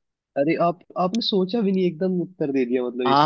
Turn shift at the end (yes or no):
yes